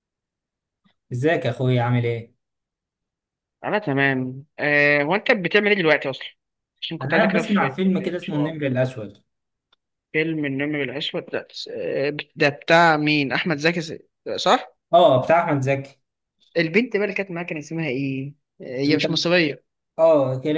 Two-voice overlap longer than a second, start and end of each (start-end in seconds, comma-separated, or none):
7.0-8.5